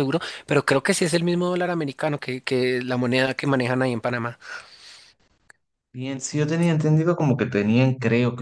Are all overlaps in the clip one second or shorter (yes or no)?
yes